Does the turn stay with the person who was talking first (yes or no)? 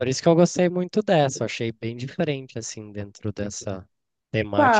no